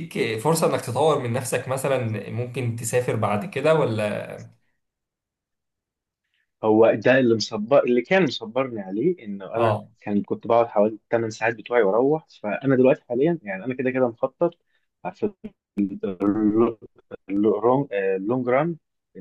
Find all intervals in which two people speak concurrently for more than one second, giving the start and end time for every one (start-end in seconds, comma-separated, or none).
none